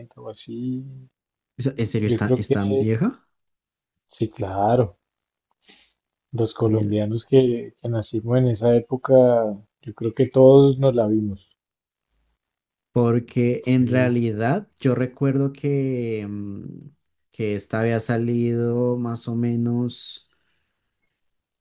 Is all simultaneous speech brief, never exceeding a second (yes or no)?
yes